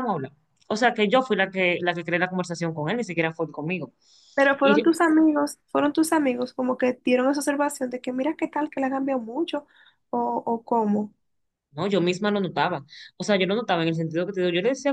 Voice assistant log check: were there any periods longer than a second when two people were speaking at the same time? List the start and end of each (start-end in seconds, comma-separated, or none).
none